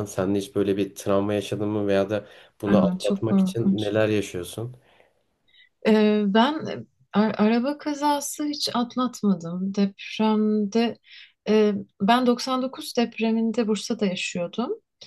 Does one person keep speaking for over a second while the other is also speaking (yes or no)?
yes